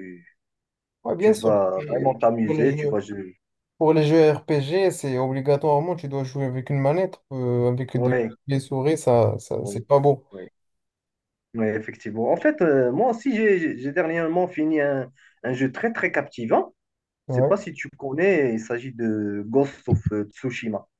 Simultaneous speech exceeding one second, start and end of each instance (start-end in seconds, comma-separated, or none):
1.2-3.0